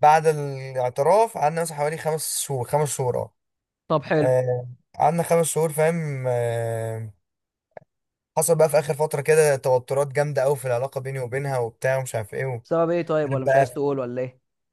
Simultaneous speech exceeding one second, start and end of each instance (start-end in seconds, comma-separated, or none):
none